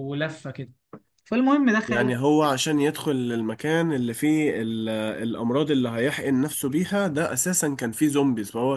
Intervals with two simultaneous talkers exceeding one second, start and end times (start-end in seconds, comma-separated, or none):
none